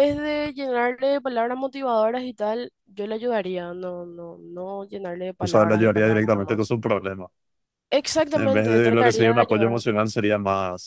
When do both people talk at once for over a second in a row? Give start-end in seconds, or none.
5.4-6.7, 8.3-9.8